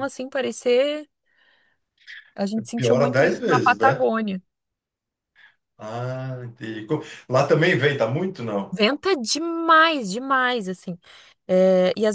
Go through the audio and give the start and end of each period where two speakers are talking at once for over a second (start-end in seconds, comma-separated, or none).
2.8-4.0